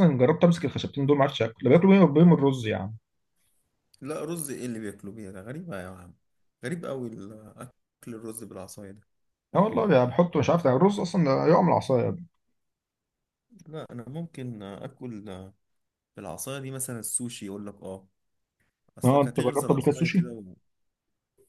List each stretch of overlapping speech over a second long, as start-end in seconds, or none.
19.0-20.3